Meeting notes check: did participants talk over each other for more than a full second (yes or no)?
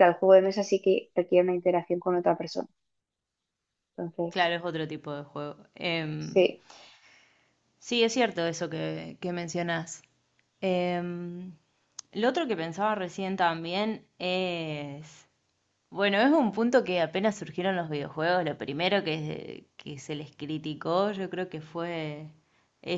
no